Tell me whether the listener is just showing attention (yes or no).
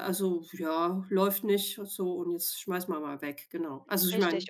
no